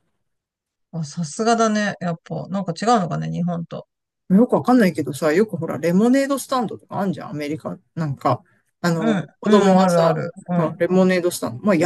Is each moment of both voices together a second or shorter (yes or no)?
no